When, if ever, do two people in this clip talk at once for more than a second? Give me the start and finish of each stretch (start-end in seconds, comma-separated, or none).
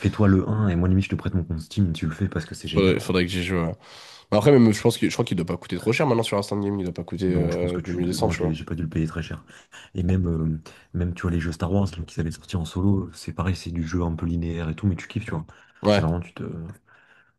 7.3-8.6